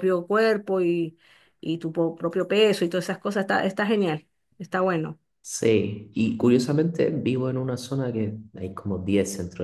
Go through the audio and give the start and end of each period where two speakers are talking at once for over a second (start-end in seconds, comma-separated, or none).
none